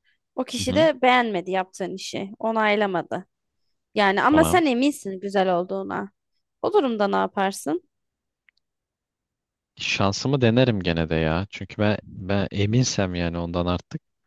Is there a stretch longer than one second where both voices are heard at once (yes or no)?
no